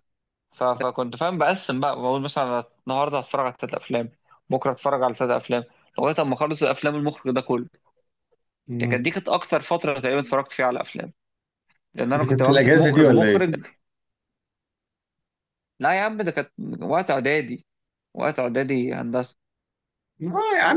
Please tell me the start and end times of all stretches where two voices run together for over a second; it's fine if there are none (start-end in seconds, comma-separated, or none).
12.2-13.6